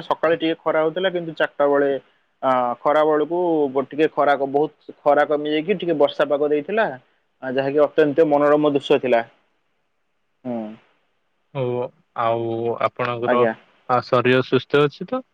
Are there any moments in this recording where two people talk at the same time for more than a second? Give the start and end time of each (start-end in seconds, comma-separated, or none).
none